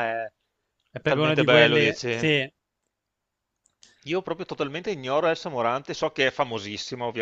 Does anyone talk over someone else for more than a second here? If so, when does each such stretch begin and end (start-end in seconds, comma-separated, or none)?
0.9-2.3